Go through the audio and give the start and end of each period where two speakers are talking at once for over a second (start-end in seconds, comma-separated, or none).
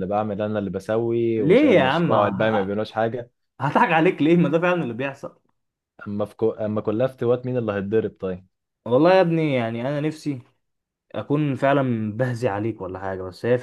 1.4-2.8